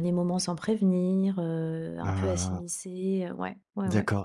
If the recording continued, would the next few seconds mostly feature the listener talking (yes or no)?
yes